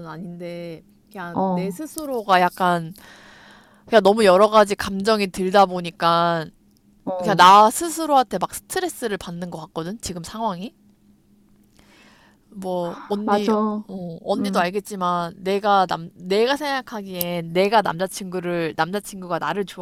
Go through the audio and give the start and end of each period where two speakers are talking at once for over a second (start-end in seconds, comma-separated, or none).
none